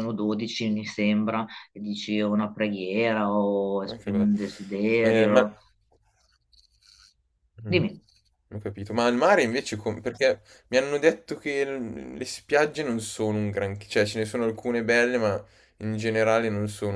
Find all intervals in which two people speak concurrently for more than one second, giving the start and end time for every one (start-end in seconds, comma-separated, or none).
none